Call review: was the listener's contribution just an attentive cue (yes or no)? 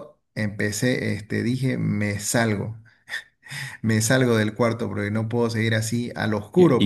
no